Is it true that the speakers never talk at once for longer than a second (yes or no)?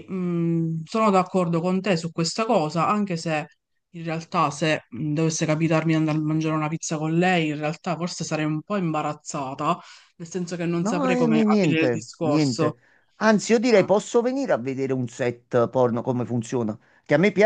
no